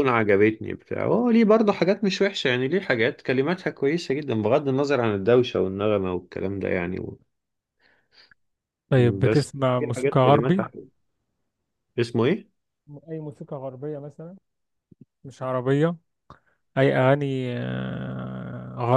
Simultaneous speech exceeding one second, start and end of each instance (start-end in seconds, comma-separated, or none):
9.2-10.7